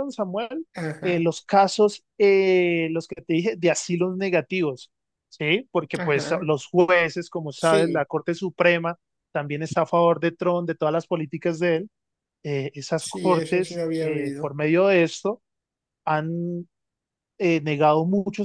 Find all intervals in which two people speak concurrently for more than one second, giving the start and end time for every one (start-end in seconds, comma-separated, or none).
13.0-14.6